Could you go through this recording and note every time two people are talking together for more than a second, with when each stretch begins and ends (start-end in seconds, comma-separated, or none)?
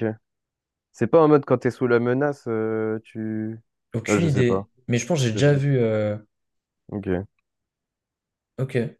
none